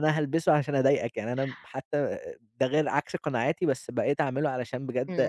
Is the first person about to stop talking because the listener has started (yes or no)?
yes